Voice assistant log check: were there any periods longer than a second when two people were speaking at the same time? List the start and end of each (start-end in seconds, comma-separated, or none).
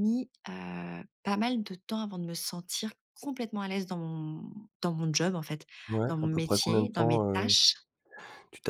6.1-7.5